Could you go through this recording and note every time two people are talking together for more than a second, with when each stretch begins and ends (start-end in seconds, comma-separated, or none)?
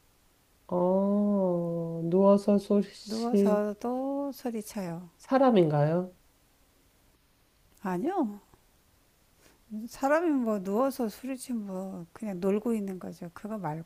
none